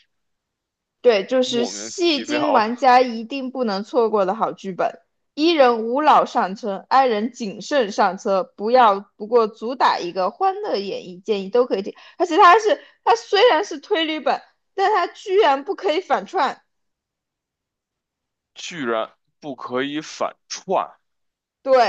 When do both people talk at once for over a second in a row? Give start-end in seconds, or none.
1.4-2.7